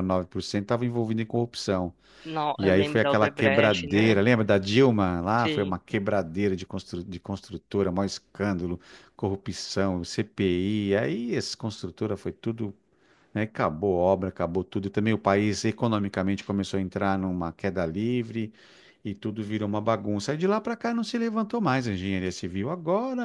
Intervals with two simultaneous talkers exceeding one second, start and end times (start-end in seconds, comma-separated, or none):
2.6-4.2